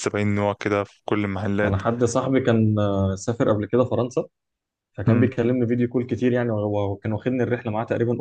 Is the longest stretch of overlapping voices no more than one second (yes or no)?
yes